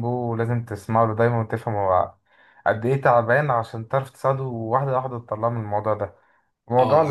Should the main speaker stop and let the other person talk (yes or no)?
yes